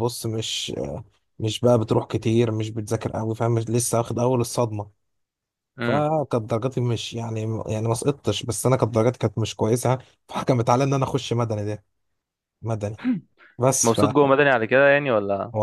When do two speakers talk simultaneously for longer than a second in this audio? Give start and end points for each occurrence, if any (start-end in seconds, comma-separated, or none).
none